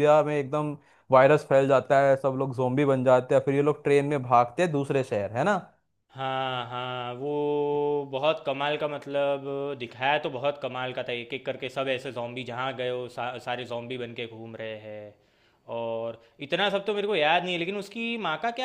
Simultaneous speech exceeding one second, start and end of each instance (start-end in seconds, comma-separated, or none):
none